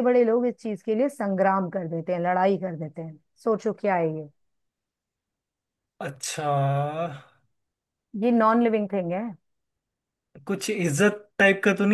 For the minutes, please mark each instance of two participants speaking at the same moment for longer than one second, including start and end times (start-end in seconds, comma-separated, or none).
none